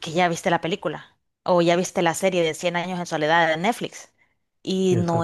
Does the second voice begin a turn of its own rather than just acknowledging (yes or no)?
no